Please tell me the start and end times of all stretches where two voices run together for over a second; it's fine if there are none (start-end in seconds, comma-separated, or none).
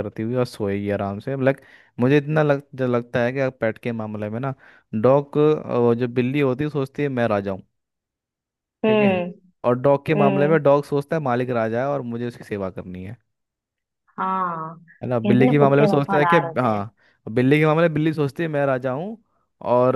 15.0-16.8